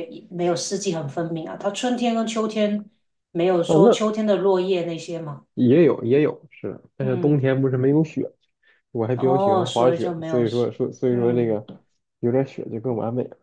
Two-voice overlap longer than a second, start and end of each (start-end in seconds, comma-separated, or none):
9.1-10.4